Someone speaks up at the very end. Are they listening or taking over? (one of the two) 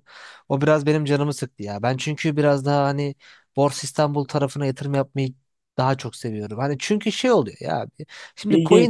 listening